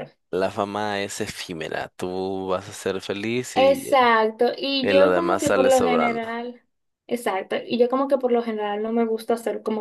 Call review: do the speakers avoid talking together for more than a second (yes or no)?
no